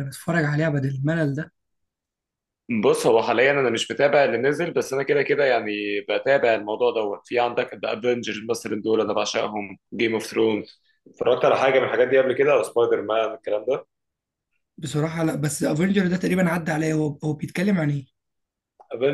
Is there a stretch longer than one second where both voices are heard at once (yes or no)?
no